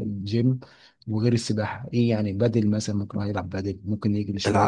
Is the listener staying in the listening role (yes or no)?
no